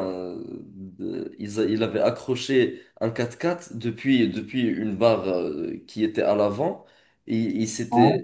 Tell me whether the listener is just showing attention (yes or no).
yes